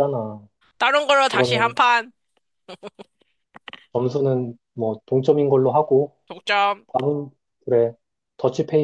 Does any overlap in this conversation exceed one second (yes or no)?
no